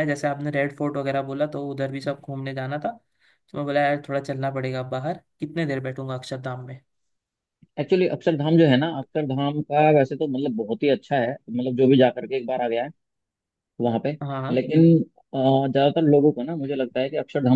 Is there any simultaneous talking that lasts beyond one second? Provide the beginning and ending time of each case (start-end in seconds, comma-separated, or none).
none